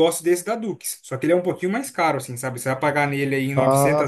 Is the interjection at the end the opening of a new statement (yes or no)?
no